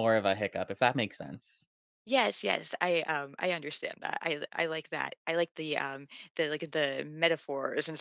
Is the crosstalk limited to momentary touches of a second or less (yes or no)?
yes